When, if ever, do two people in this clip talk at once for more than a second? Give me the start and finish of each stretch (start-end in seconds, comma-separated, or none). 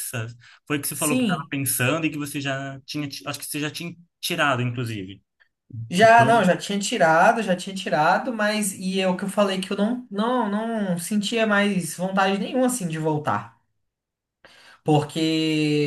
none